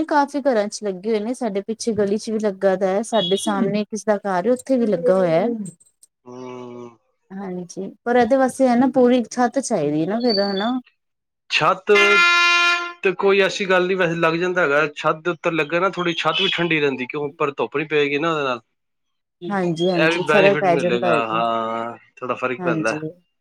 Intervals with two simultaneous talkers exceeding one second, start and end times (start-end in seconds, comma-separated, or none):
20.0-21.4